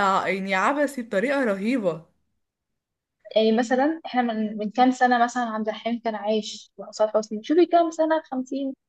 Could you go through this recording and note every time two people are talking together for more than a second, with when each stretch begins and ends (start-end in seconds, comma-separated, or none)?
none